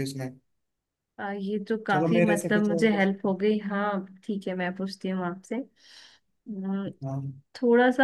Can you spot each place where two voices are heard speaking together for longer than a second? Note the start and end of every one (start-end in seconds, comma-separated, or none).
1.9-3.3